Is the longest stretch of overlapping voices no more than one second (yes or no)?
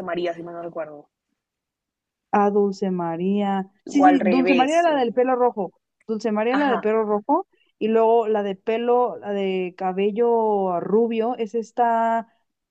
no